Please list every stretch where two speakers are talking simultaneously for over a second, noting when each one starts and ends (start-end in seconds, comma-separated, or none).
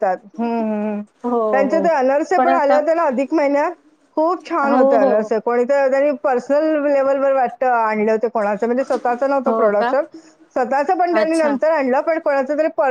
none